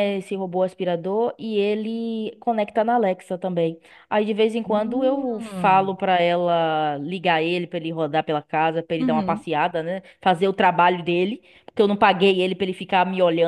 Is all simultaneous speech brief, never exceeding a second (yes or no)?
no